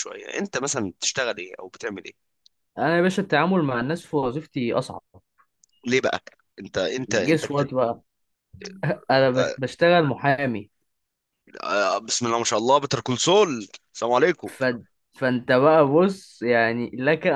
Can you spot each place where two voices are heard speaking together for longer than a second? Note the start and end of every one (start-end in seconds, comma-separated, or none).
none